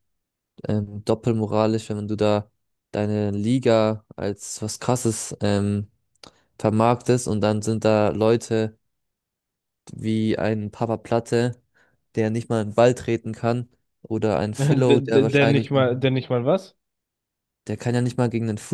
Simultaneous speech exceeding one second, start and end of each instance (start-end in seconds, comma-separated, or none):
14.6-15.8